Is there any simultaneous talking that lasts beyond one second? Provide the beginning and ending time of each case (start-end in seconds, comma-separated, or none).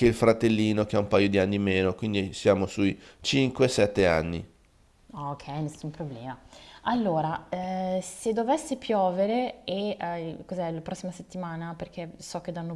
none